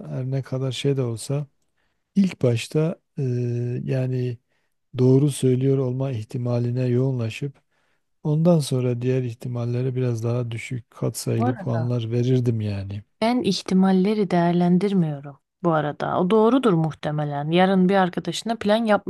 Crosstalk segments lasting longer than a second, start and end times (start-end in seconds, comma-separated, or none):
none